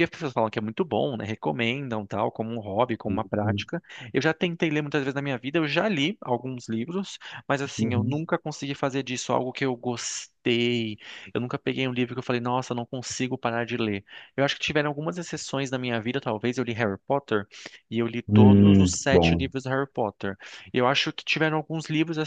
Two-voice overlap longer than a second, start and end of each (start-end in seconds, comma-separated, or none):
18.3-19.5